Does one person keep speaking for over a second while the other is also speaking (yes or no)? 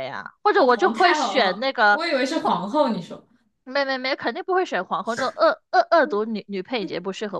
yes